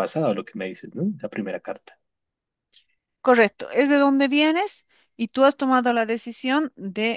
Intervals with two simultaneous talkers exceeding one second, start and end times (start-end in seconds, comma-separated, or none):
none